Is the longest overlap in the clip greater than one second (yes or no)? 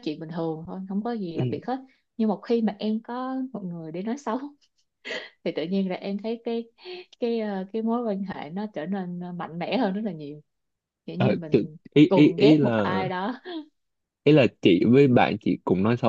yes